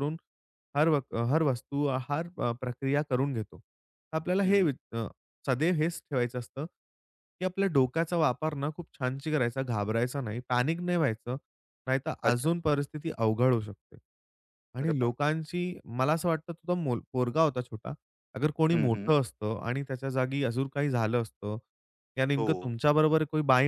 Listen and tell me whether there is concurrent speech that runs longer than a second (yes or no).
no